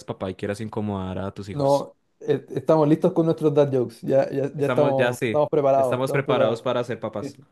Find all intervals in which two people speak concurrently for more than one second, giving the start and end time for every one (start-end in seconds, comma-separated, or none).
4.6-6.7